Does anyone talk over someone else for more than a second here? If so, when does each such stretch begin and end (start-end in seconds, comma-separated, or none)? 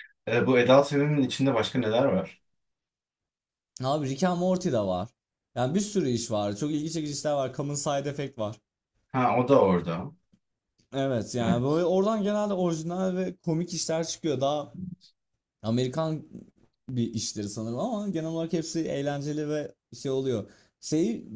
none